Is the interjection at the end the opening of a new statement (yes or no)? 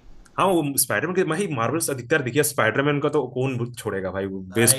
yes